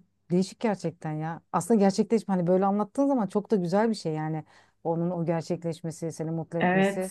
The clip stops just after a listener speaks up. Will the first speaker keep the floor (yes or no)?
no